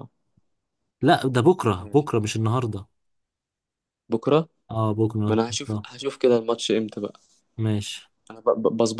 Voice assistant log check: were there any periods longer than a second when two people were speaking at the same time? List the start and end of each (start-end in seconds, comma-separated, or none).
none